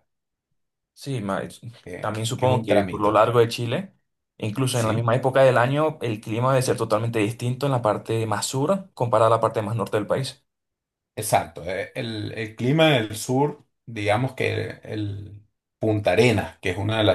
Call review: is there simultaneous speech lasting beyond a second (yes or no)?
yes